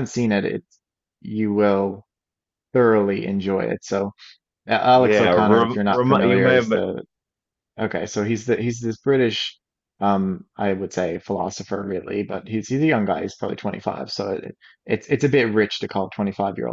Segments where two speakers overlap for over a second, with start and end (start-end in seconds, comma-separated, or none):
4.9-6.7